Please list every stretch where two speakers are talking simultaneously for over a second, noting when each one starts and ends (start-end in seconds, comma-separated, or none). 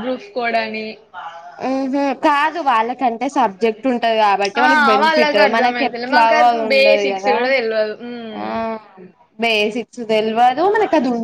5.5-7.3